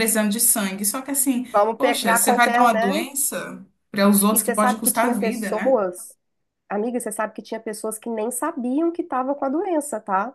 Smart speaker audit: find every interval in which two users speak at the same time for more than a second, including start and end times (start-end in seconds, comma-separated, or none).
1.5-3.1, 4.3-5.8